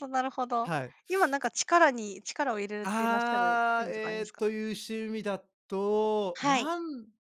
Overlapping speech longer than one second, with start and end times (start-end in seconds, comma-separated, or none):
2.8-4.4